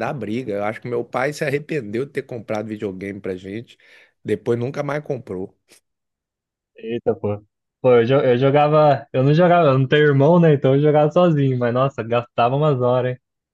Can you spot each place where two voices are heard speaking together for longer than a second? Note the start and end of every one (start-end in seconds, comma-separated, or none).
none